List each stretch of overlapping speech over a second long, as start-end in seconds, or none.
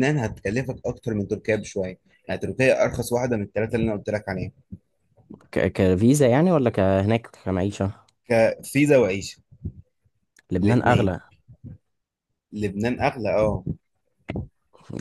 none